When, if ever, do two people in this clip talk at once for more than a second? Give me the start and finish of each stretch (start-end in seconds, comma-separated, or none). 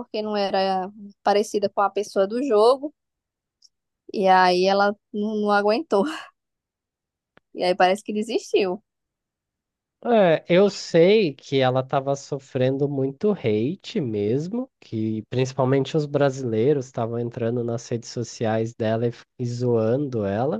none